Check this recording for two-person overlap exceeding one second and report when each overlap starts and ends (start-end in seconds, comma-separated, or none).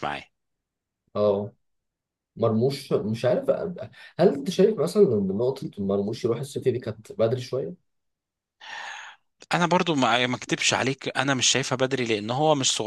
none